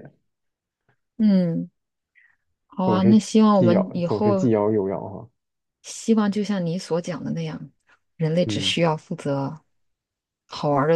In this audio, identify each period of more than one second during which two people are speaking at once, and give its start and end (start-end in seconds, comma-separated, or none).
2.8-4.5